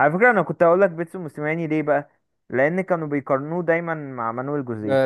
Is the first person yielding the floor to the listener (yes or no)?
yes